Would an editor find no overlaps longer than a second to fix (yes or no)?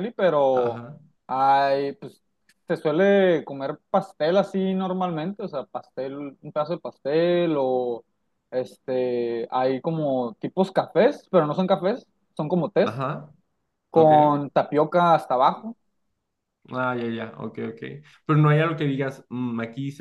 yes